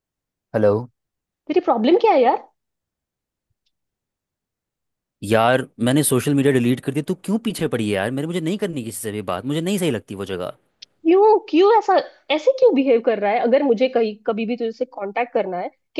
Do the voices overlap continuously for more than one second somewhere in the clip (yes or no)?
no